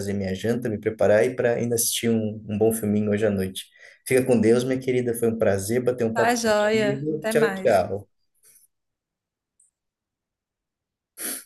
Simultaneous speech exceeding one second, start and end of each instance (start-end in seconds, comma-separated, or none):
6.1-7.9